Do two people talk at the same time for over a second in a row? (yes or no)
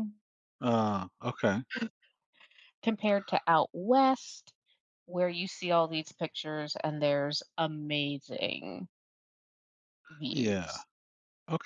no